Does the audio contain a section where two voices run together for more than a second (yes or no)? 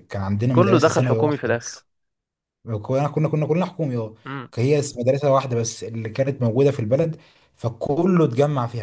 yes